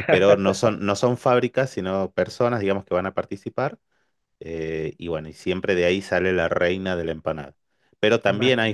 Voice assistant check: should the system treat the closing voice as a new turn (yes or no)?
no